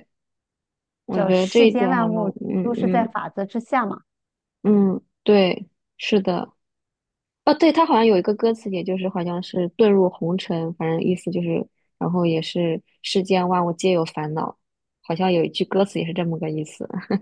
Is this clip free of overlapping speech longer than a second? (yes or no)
no